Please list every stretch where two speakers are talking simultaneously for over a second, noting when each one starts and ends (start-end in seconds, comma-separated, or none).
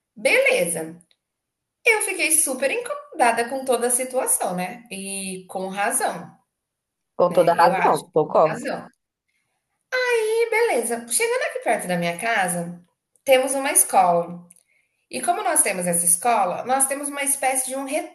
7.3-8.7